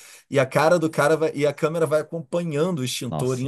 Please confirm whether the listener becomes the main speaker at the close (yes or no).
no